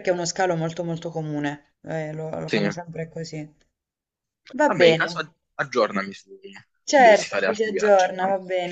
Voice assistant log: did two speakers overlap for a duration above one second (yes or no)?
yes